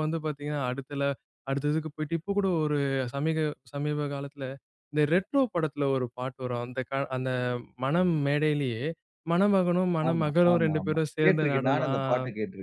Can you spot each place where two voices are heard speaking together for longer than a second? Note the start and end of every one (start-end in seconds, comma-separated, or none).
10.1-11.9